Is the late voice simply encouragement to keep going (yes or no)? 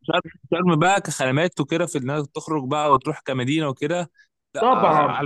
no